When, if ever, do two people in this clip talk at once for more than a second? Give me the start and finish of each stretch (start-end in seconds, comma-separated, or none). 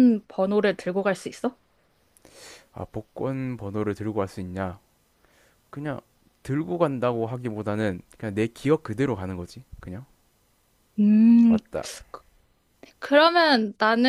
none